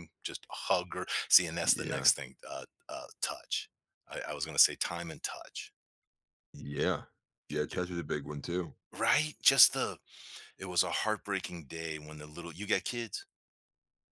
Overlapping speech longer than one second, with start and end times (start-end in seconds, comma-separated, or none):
none